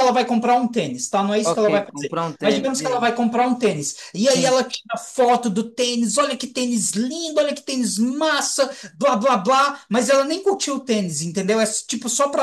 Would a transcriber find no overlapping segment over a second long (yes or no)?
no